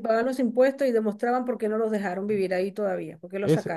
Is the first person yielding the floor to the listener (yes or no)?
yes